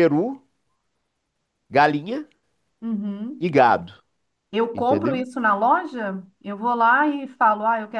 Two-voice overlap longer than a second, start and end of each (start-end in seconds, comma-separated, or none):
none